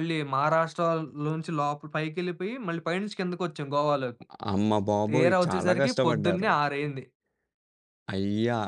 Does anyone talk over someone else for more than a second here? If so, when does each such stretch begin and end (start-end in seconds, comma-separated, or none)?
5.1-6.5